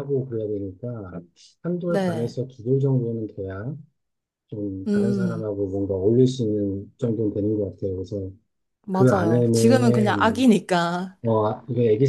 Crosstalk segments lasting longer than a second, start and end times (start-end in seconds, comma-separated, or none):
8.9-10.4